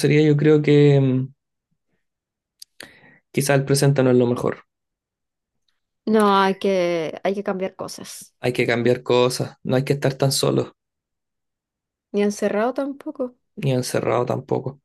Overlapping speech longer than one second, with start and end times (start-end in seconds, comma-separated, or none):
none